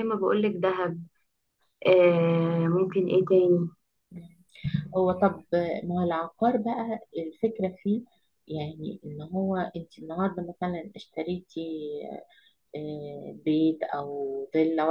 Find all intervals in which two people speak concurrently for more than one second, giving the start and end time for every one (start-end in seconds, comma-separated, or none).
none